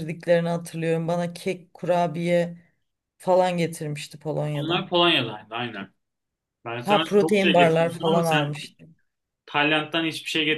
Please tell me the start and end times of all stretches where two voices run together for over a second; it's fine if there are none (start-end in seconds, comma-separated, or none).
6.9-8.6